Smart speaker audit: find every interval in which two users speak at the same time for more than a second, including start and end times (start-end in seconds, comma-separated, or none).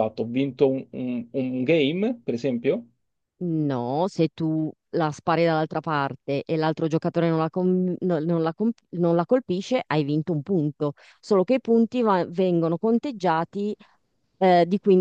none